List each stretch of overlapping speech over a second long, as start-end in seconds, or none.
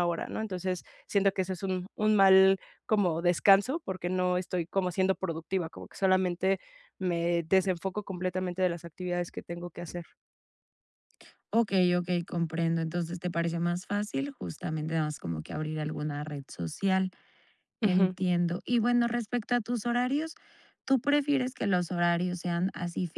none